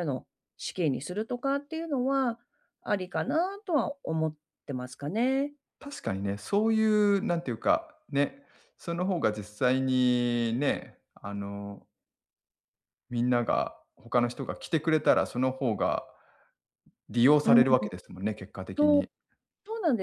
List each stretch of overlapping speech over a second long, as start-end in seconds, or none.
none